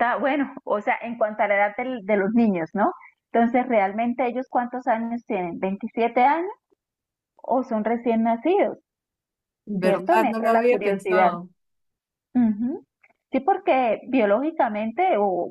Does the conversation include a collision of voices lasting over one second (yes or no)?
yes